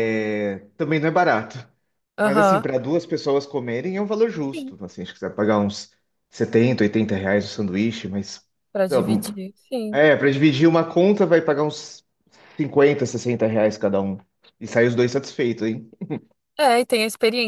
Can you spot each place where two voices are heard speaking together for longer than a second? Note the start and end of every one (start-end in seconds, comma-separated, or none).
none